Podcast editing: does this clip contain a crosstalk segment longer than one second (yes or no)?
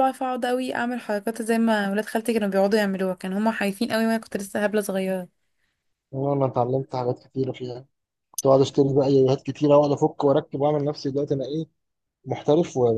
no